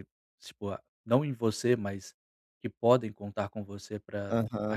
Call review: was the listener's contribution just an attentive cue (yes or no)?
no